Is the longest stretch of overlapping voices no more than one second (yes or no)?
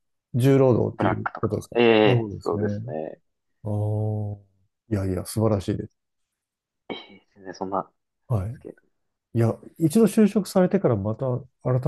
no